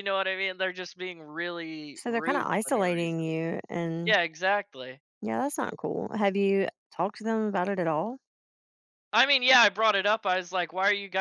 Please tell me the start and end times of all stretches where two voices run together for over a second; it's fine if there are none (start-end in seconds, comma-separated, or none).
1.9-3.2